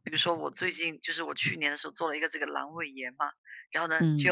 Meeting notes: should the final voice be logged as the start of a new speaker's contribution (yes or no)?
no